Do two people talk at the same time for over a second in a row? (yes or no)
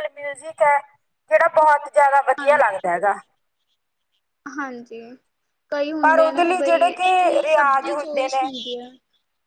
yes